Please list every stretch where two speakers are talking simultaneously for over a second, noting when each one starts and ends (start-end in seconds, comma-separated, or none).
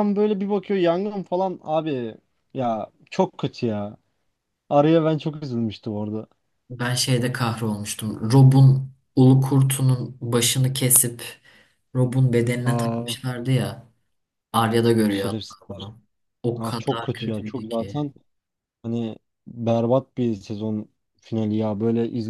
16.6-18.1